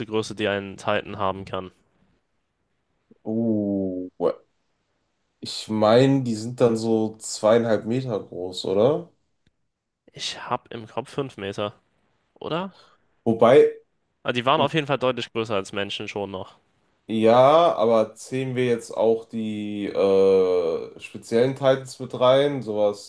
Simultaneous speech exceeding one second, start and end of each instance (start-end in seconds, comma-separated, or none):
none